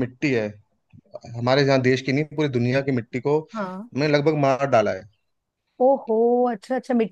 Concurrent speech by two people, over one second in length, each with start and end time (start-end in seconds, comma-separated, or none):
none